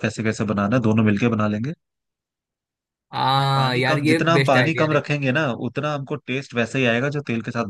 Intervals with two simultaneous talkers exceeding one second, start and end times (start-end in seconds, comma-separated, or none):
3.5-5.0